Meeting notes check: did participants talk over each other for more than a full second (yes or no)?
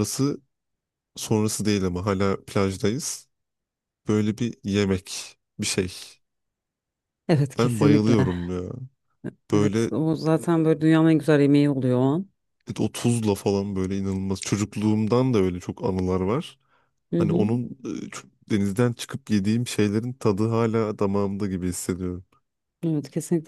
no